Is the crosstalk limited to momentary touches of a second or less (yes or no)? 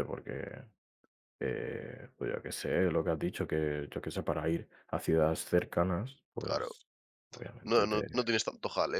yes